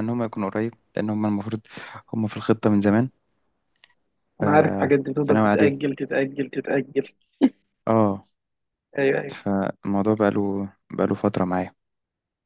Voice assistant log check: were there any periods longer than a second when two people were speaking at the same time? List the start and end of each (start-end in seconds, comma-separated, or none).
none